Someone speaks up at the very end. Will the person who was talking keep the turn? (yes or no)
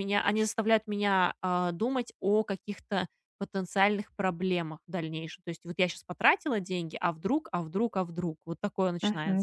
no